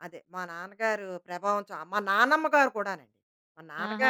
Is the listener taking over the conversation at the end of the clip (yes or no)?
yes